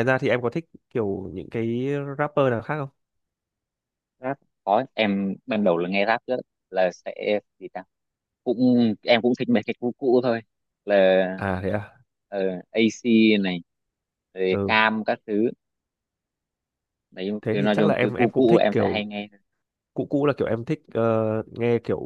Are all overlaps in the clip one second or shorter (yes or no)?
no